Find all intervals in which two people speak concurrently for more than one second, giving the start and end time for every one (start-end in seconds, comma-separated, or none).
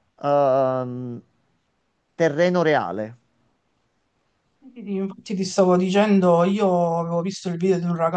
none